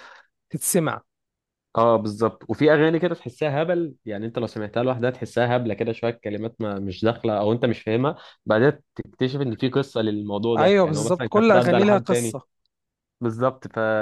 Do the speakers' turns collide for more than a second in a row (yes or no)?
yes